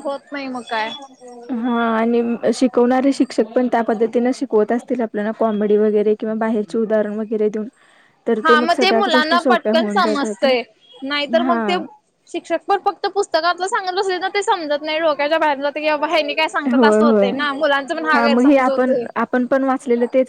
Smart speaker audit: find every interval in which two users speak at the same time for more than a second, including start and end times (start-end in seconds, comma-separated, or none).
8.8-10.4